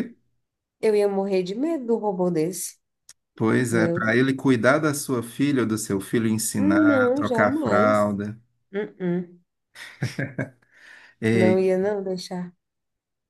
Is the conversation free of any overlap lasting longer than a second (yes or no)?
no